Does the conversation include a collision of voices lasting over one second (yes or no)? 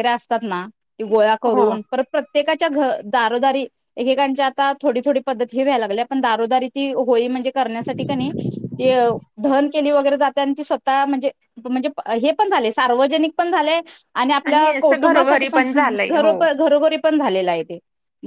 yes